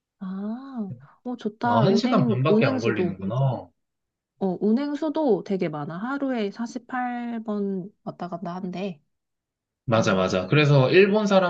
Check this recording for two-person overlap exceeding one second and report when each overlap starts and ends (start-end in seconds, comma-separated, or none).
1.6-3.2